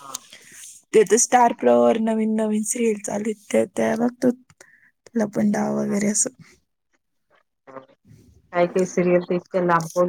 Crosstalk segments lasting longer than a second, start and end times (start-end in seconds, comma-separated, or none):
none